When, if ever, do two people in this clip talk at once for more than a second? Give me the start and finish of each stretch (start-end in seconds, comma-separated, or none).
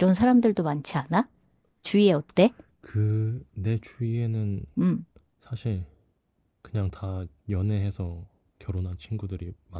none